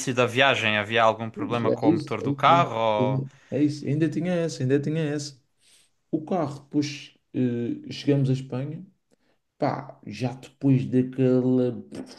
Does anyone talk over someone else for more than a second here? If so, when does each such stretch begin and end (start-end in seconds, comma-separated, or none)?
1.3-3.2